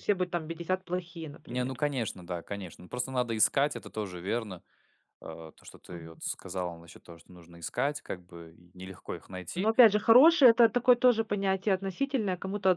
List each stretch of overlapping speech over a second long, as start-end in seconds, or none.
none